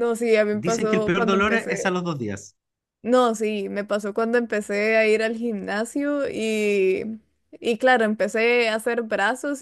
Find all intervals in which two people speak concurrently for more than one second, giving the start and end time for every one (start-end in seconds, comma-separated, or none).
0.6-1.9